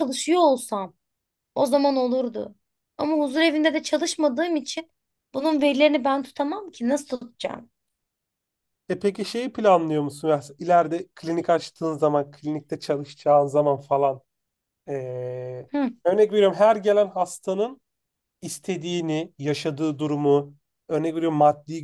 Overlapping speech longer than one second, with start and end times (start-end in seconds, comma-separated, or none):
none